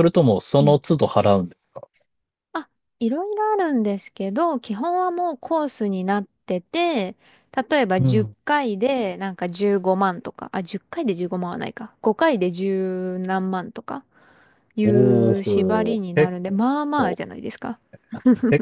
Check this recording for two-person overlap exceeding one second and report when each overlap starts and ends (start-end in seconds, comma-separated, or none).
14.8-16.3